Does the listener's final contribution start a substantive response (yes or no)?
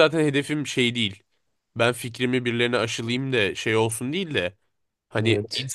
no